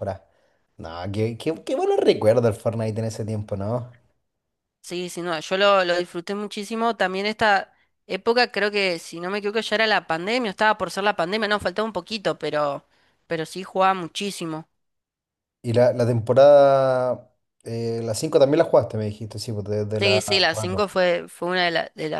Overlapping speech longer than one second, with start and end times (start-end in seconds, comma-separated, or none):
none